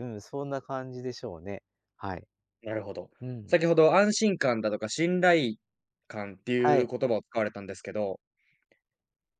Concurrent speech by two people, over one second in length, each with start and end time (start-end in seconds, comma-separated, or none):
none